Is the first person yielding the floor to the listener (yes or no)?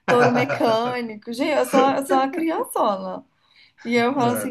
no